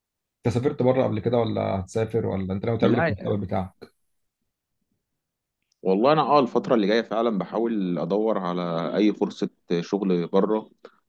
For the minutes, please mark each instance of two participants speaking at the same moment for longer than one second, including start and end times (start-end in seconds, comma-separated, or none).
none